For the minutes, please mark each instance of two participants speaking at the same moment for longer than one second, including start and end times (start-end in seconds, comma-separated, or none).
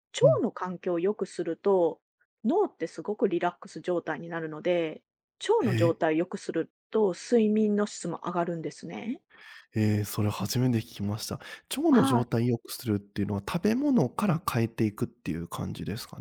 none